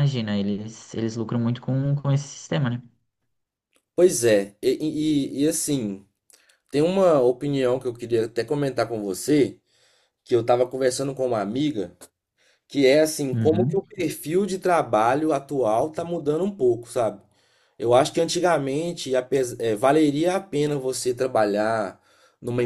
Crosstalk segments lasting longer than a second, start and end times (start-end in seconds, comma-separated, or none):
none